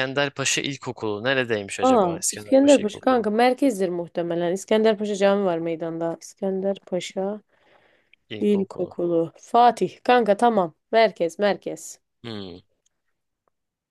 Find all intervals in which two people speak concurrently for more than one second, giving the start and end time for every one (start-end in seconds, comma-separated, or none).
1.8-3.3